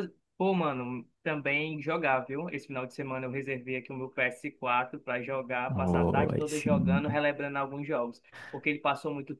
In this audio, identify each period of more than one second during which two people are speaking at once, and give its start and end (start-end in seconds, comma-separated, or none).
5.7-7.2